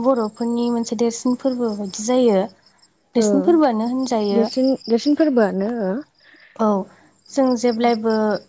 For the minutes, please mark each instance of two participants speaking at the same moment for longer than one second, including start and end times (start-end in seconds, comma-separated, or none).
none